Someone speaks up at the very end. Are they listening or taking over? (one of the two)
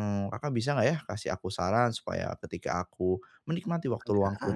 listening